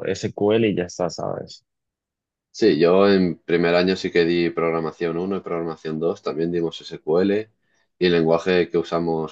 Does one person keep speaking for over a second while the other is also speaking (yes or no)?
no